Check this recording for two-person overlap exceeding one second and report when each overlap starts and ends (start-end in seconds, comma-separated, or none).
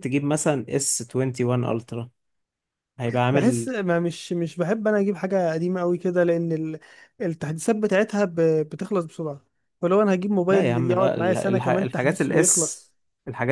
10.5-12.8